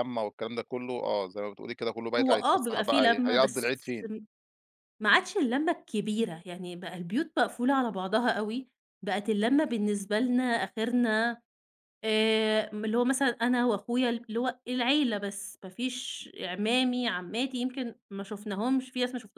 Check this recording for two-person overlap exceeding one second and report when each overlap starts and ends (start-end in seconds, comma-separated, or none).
2.2-3.7